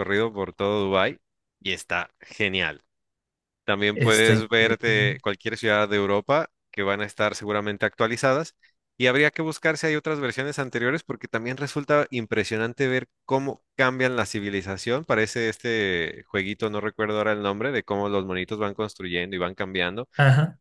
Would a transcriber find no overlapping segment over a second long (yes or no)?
no